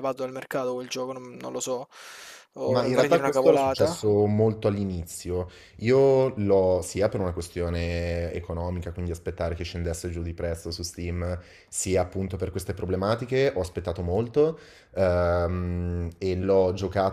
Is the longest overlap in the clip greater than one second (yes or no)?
yes